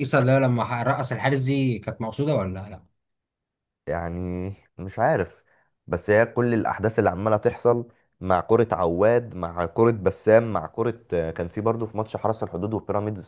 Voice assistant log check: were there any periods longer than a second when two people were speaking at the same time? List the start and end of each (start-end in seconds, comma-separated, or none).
none